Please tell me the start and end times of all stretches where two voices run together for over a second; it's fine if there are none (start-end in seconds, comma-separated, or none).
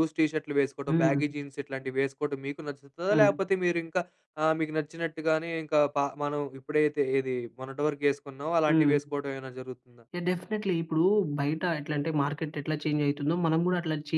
none